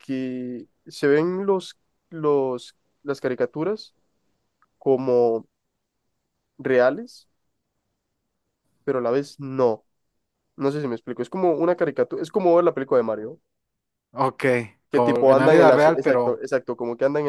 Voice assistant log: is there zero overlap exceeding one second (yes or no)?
no